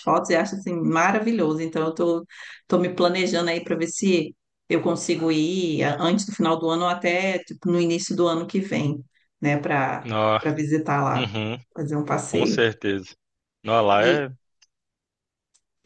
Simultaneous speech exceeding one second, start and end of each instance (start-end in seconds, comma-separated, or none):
none